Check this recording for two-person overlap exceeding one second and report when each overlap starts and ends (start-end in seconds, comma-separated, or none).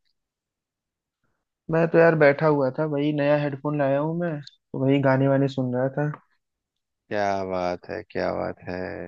none